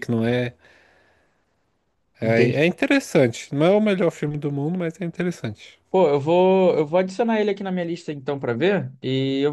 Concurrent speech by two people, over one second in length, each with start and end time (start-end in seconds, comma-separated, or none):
none